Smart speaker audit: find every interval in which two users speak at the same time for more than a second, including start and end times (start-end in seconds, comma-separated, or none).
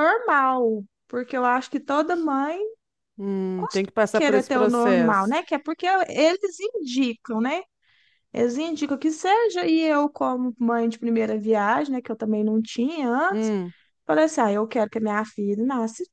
3.5-5.4